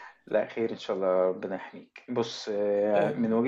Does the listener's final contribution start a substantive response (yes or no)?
no